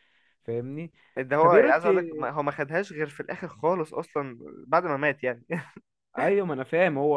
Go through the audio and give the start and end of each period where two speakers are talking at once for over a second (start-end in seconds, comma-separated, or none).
none